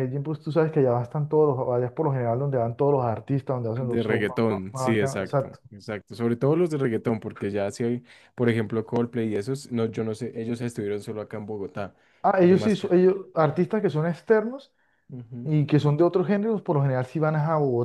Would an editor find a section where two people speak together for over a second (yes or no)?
yes